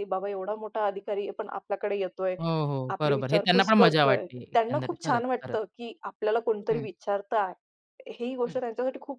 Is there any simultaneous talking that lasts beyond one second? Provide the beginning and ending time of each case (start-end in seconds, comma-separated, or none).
3.0-5.6